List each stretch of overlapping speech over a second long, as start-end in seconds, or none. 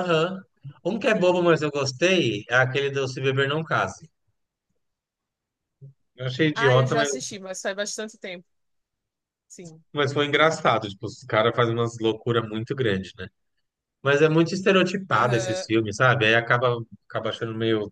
none